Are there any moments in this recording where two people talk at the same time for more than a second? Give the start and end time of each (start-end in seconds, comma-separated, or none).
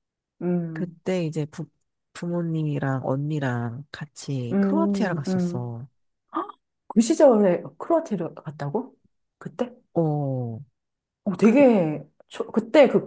4.5-5.8